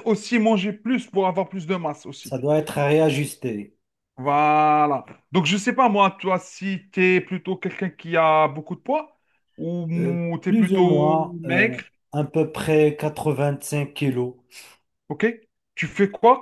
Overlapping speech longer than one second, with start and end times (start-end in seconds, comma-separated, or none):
9.9-11.8